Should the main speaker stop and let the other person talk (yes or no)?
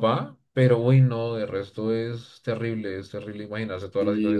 yes